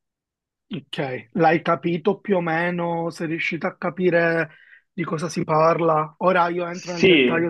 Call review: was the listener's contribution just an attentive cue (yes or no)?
yes